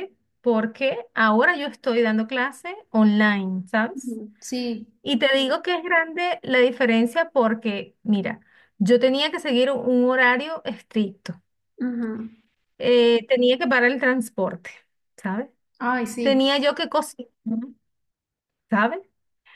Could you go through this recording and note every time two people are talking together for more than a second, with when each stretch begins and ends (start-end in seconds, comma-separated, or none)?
none